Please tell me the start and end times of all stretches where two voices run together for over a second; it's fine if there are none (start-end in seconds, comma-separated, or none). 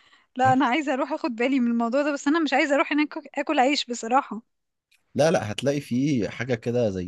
none